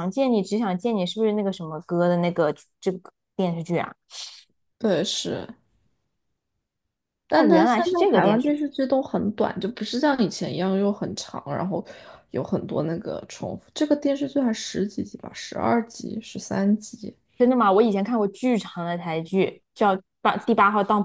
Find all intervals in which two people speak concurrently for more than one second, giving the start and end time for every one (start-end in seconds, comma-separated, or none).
7.3-8.6